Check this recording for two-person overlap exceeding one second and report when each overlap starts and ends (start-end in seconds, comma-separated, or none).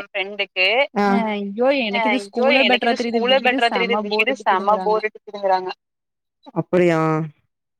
2.0-5.0